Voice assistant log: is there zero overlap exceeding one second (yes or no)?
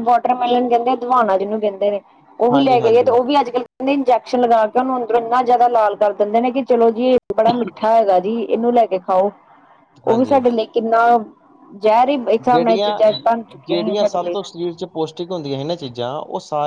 yes